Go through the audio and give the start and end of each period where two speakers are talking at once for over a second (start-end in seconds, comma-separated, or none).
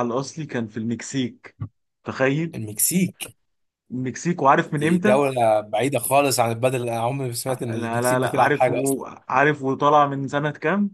7.7-9.0